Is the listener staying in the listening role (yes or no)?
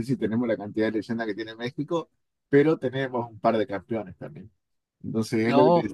yes